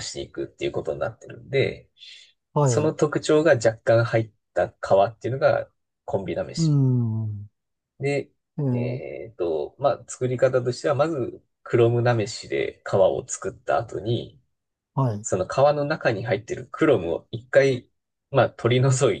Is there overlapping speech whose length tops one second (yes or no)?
no